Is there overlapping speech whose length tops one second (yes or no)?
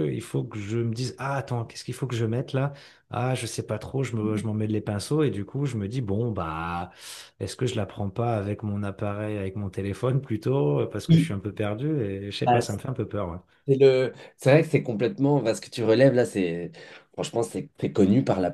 no